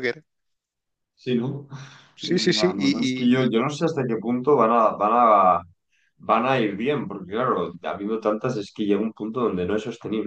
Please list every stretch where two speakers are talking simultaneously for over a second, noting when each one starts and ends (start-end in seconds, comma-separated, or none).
2.2-3.5